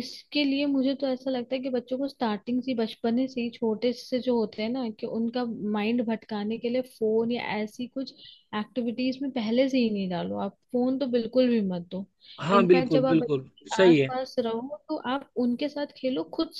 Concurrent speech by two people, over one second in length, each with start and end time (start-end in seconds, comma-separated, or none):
12.6-14.1